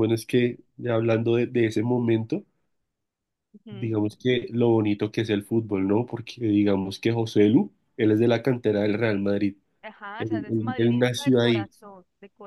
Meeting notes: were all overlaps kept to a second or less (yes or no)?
no